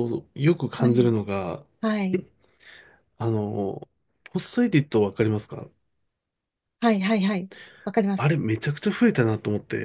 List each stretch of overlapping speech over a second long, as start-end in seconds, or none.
none